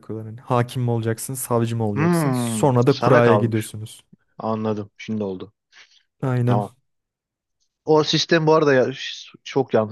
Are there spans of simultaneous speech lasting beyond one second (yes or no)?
yes